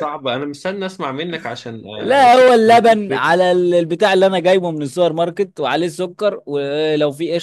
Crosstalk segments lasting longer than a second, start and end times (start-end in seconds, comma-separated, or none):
2.0-3.3